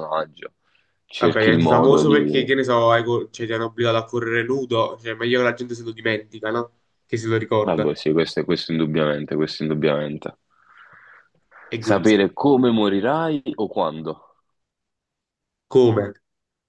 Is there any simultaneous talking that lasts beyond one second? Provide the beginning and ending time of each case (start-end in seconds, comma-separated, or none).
1.2-2.5